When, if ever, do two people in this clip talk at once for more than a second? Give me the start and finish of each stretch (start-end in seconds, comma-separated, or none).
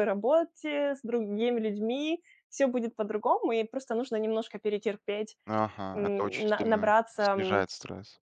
5.9-7.7